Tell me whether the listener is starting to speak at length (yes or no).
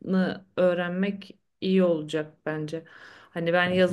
no